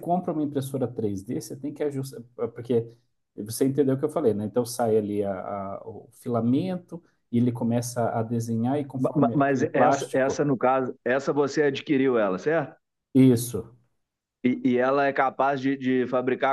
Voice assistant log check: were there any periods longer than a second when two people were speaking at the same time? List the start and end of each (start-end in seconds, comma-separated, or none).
9.1-10.4